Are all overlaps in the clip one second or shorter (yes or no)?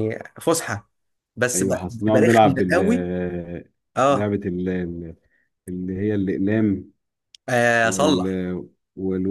no